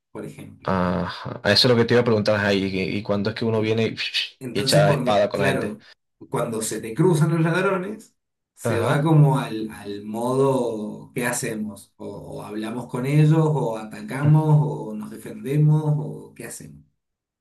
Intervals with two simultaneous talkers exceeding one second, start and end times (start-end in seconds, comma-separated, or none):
4.5-5.8